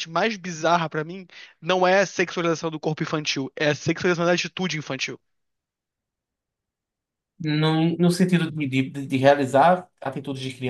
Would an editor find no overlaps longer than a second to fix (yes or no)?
yes